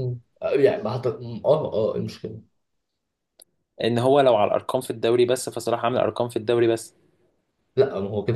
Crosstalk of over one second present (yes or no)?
no